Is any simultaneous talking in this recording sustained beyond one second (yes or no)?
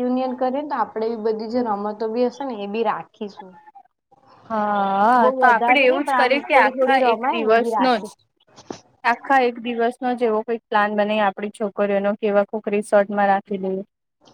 yes